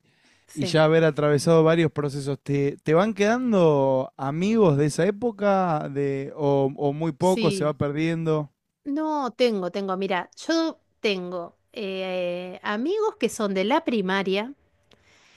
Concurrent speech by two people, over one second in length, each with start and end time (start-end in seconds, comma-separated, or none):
none